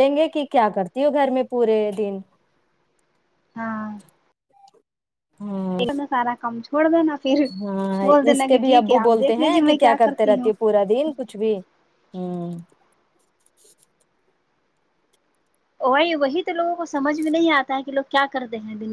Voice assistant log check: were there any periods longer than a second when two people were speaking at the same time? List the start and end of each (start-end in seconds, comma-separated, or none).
8.0-10.7